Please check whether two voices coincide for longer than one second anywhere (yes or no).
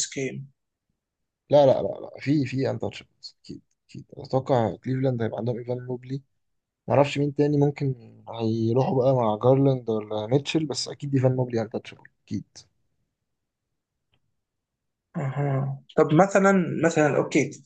no